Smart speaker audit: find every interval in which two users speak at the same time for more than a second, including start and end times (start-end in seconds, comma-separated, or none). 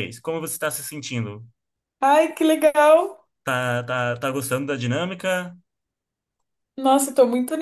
none